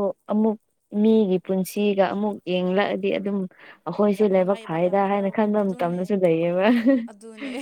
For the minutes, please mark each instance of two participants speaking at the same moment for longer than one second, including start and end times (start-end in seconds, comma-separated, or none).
4.2-6.0